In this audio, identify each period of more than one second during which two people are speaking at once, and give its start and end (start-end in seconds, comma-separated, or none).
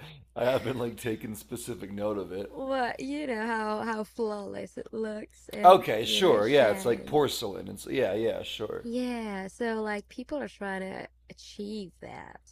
5.6-7.2